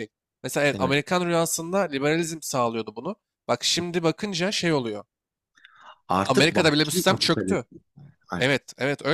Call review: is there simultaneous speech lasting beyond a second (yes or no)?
yes